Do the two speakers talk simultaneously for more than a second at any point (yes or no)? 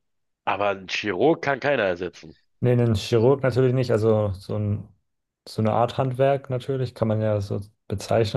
no